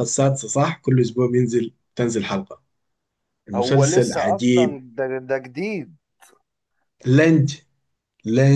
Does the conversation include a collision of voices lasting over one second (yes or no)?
yes